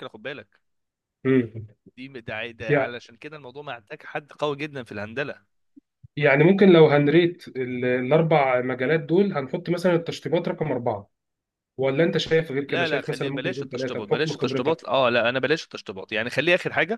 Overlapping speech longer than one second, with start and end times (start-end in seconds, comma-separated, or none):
12.7-14.8